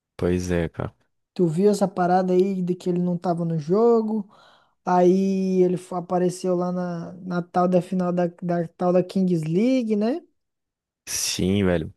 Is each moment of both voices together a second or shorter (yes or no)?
yes